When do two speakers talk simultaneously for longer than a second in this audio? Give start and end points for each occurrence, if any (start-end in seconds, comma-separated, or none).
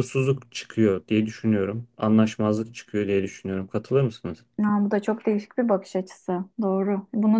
none